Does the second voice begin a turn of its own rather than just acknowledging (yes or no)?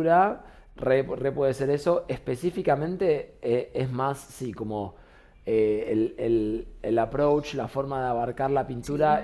no